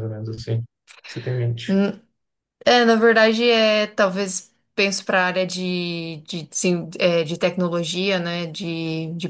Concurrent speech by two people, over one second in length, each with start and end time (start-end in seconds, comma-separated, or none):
none